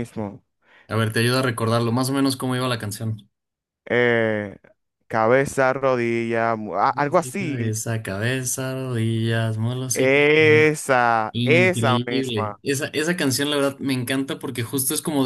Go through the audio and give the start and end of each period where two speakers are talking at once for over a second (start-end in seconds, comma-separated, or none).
11.3-12.6